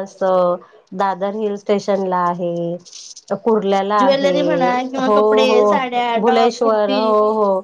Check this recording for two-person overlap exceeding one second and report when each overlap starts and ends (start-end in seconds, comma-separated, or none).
5.1-7.1